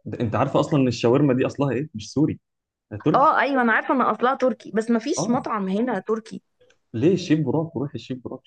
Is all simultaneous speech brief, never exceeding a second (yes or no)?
yes